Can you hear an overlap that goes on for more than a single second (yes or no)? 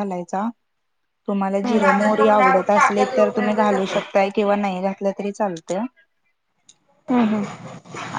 yes